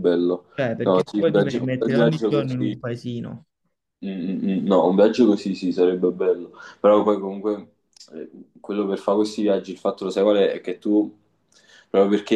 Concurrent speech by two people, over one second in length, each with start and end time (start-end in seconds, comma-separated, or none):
0.8-2.7